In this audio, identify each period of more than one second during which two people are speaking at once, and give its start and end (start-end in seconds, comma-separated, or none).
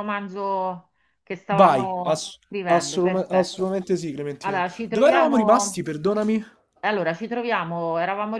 1.5-3.8, 4.4-5.9